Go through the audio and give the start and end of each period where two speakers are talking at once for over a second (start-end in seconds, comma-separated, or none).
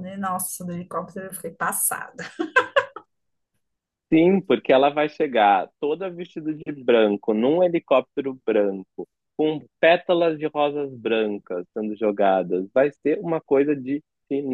none